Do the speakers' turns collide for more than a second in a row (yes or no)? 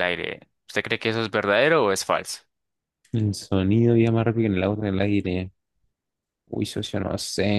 no